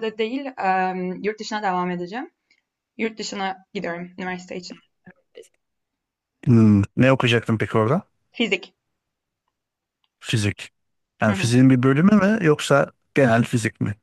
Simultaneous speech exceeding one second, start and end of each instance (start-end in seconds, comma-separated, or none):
none